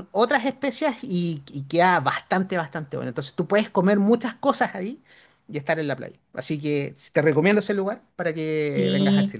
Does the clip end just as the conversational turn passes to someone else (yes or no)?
yes